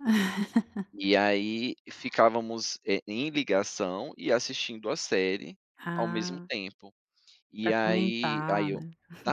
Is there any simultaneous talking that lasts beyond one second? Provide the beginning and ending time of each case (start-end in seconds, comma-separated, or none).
7.6-8.8